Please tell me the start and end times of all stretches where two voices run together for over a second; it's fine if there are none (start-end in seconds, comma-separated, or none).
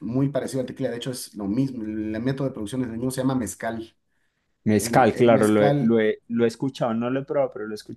4.8-6.0